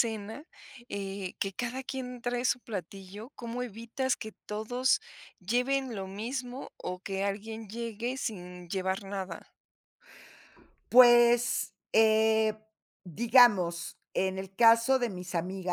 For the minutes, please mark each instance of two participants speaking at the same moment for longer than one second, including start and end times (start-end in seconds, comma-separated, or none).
none